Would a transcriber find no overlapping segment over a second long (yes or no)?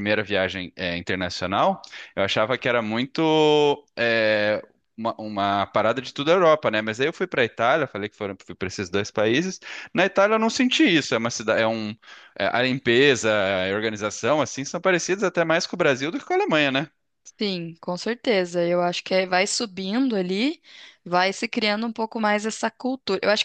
yes